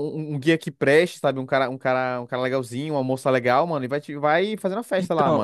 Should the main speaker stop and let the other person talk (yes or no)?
yes